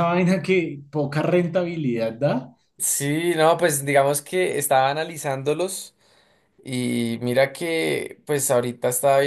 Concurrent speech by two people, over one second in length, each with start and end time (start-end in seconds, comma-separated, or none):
none